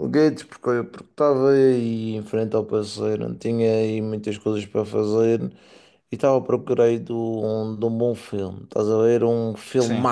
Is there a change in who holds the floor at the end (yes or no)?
no